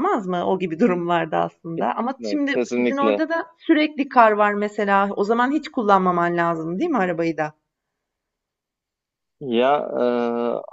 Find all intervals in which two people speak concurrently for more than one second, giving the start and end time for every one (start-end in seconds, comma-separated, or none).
1.7-3.2